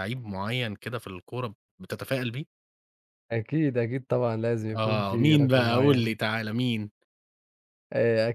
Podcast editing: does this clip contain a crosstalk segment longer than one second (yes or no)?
yes